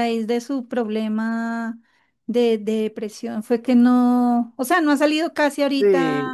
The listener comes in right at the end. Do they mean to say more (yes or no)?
yes